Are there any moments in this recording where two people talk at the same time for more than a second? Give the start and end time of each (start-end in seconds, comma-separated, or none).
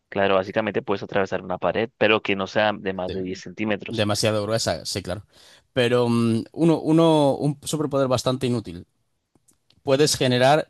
none